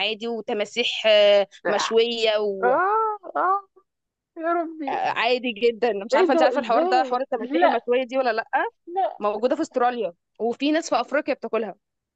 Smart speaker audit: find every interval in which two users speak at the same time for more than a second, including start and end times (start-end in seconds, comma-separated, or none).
6.1-7.9